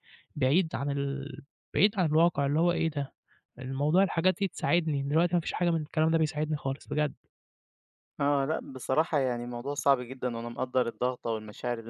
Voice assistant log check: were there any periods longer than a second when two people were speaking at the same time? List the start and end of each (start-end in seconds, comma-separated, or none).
none